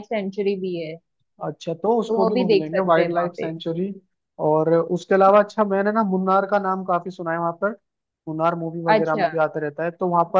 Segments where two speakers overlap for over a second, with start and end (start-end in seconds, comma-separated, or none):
2.1-3.5